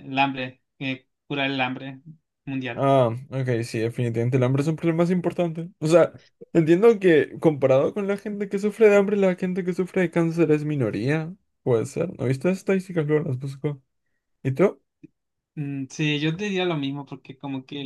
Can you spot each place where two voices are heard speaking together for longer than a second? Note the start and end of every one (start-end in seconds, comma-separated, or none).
none